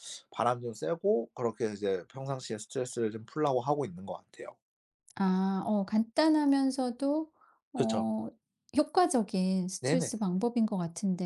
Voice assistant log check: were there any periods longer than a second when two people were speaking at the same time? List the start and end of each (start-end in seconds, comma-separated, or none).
none